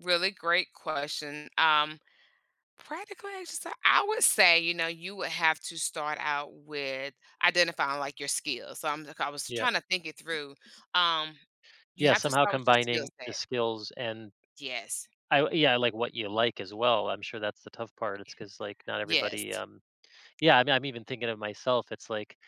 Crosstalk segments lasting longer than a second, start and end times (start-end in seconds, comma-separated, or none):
12.0-13.4